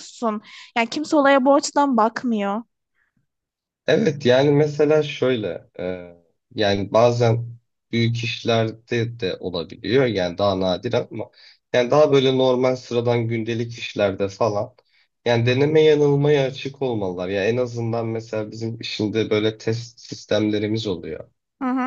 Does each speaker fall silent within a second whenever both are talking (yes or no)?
yes